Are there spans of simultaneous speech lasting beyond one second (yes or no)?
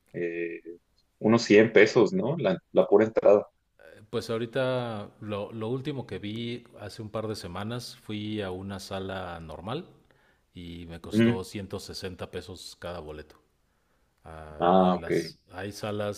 no